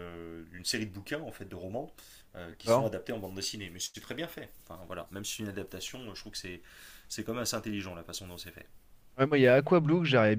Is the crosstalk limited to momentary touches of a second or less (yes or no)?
yes